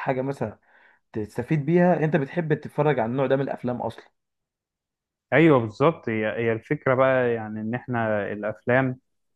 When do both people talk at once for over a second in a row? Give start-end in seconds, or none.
none